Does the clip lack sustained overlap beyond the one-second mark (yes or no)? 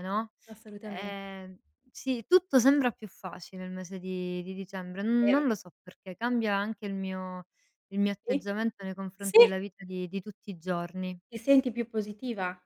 yes